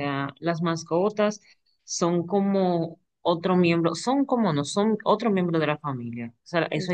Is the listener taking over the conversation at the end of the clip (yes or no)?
no